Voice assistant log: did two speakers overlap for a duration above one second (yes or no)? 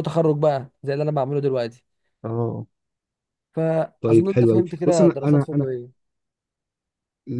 yes